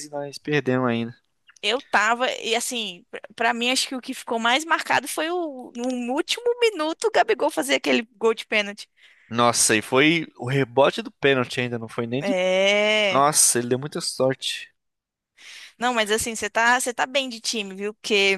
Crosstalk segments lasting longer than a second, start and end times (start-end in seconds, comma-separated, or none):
none